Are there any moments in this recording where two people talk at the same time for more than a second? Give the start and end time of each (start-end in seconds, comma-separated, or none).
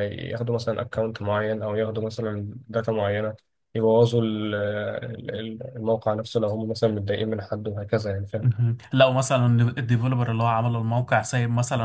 none